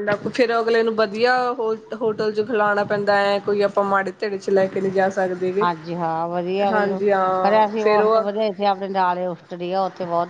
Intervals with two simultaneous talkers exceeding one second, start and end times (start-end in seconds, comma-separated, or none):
none